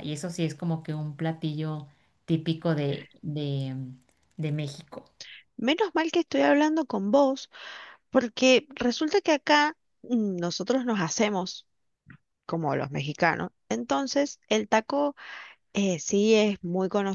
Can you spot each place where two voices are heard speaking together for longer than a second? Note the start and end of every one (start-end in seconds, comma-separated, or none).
none